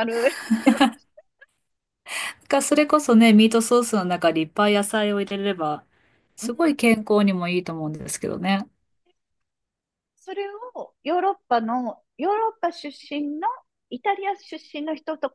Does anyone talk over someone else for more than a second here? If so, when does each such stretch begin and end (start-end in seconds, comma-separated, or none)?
none